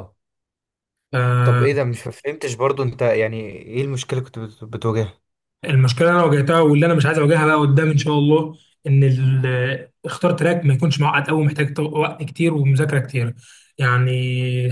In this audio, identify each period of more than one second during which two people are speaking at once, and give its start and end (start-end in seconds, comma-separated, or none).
none